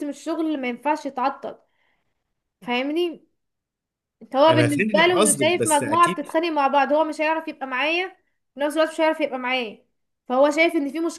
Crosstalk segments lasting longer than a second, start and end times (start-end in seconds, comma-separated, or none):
4.5-6.3